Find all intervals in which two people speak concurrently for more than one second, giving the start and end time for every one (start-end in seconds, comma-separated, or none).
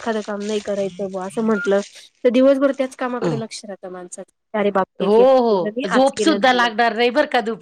5.0-6.7